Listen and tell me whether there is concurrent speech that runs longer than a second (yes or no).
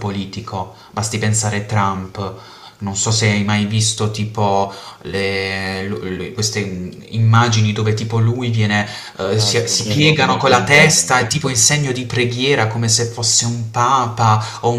yes